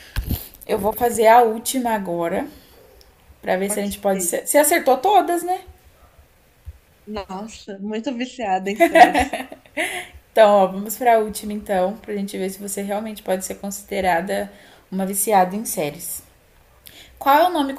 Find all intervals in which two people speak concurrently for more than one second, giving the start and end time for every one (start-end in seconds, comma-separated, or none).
none